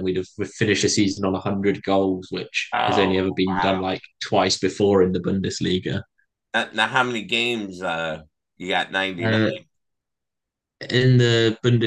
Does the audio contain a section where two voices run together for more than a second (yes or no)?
no